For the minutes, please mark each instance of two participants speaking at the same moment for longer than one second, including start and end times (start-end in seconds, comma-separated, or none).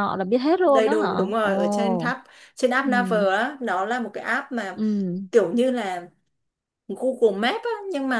0.7-2.1